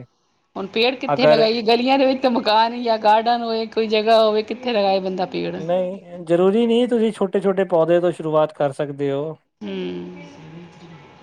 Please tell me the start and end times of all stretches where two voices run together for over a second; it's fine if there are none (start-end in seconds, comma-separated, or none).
none